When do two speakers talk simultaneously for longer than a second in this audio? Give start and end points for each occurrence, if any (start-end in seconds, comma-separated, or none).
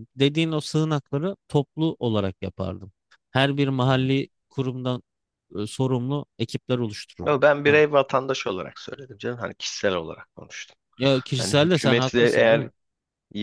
11.4-12.7